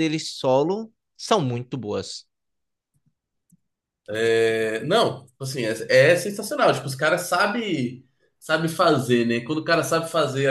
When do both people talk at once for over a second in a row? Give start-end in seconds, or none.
none